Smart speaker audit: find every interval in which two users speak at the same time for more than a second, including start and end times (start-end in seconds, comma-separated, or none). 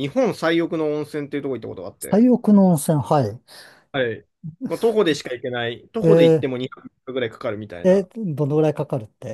none